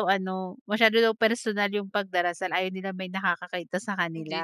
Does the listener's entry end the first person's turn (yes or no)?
yes